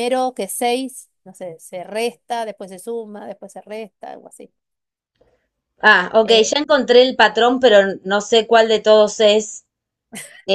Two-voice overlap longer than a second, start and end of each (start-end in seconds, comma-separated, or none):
none